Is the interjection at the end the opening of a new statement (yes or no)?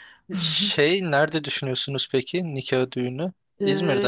yes